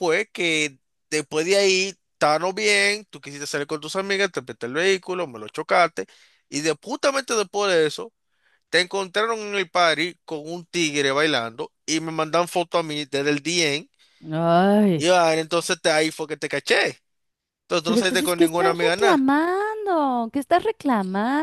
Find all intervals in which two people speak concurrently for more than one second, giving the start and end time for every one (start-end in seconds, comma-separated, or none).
17.9-19.2